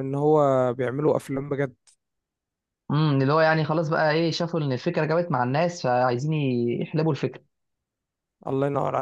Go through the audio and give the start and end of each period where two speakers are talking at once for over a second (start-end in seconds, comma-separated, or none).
none